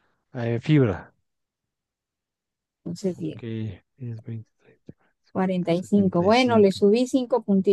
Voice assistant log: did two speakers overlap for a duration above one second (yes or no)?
yes